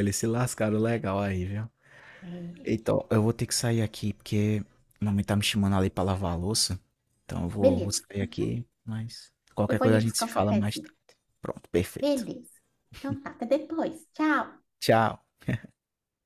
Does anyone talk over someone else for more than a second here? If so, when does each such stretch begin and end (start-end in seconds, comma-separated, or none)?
9.7-10.9